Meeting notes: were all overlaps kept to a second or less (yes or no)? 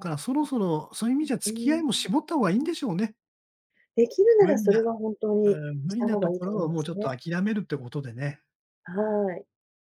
no